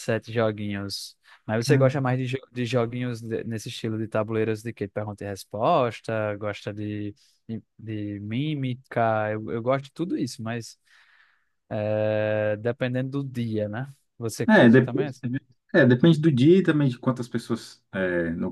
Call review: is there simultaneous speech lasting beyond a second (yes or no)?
no